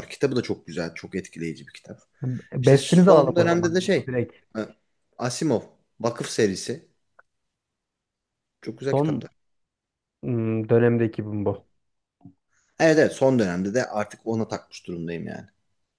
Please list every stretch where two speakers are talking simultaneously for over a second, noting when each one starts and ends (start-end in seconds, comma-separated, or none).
2.6-4.1